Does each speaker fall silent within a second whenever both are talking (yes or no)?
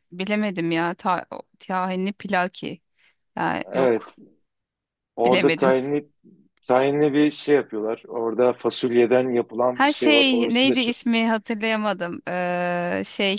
no